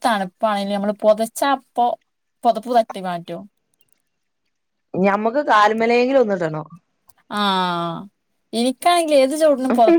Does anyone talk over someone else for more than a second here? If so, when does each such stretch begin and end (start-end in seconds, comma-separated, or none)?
none